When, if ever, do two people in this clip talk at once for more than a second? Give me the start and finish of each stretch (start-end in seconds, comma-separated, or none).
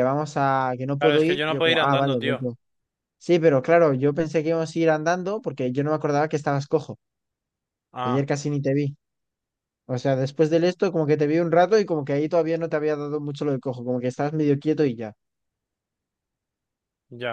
1.0-2.5